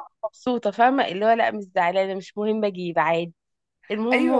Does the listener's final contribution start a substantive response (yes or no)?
yes